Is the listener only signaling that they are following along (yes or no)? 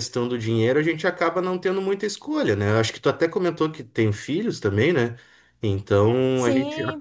yes